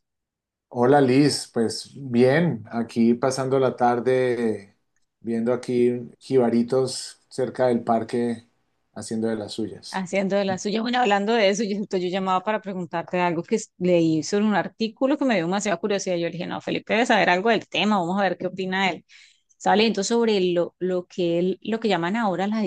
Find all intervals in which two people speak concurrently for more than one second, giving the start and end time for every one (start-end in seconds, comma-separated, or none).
none